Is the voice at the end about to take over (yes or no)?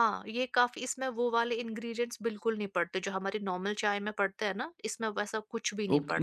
yes